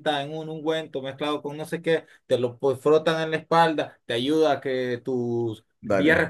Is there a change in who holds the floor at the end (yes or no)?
no